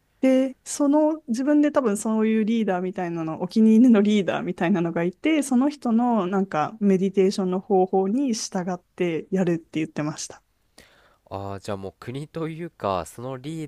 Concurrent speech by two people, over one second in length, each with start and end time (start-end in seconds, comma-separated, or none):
none